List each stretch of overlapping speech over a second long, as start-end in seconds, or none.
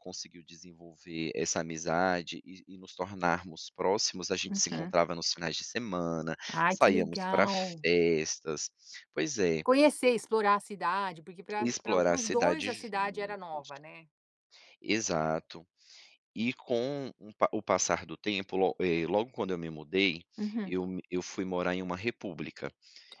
6.5-7.8, 11.6-13.7